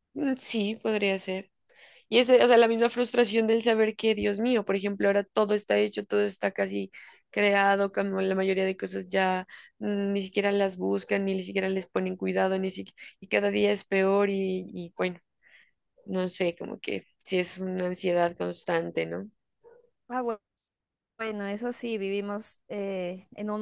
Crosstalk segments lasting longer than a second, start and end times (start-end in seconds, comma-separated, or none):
none